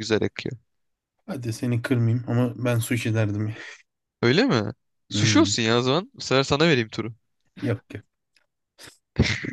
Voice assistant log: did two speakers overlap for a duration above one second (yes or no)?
no